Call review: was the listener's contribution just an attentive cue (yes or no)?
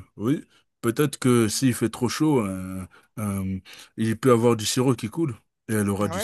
no